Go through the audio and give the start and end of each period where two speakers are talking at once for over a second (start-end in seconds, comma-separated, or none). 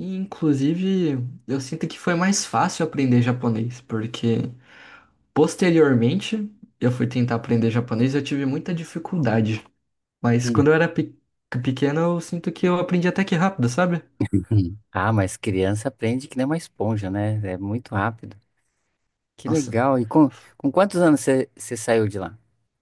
none